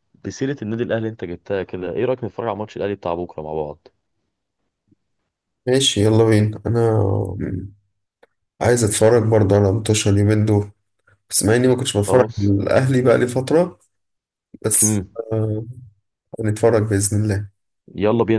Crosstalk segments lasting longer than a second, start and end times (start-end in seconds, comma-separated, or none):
none